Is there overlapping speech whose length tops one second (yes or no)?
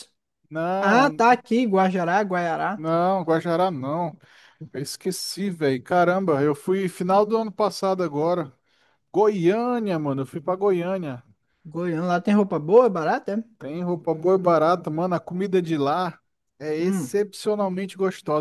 no